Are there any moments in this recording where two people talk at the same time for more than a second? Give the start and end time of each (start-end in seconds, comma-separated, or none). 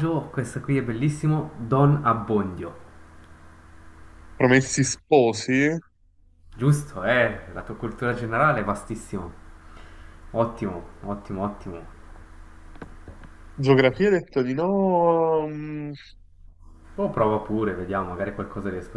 none